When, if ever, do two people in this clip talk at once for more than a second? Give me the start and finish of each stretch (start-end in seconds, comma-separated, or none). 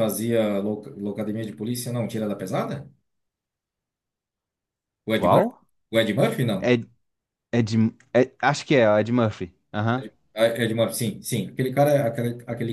none